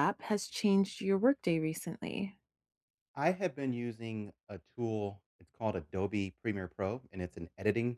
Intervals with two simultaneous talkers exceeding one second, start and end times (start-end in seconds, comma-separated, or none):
none